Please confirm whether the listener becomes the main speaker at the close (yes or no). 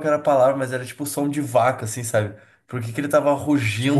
no